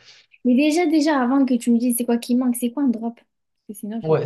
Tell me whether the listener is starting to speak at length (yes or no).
yes